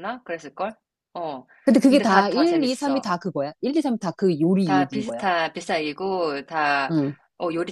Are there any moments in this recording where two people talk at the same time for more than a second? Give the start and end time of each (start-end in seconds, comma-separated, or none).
1.9-3.1